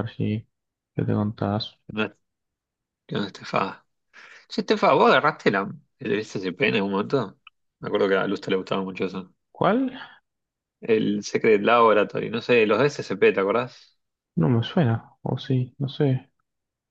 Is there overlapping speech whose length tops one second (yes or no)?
no